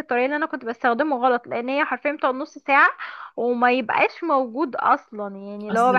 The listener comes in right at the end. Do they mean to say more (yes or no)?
yes